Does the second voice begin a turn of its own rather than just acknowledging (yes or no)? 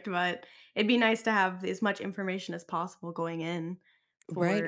yes